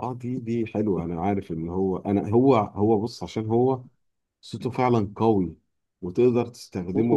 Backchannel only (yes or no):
yes